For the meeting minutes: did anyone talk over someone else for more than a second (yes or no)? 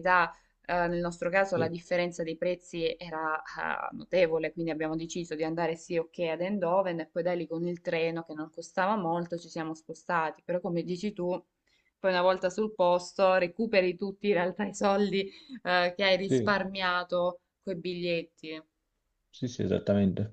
no